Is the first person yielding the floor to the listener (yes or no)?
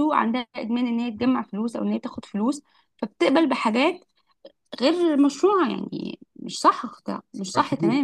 yes